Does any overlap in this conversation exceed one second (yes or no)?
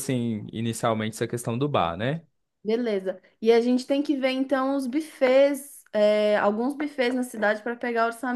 no